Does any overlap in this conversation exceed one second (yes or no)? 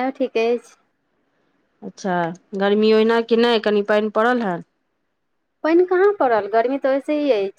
no